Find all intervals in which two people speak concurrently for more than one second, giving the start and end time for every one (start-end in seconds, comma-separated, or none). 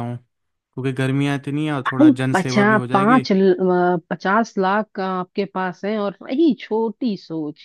1.9-3.3